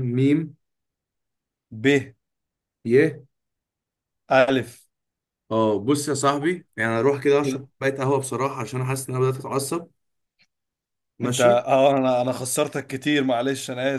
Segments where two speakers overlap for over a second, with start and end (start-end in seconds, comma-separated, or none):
none